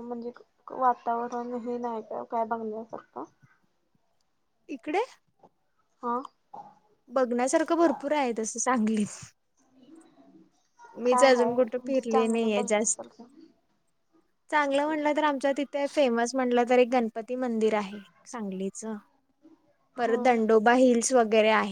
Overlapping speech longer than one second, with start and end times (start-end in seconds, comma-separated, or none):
11.1-13.1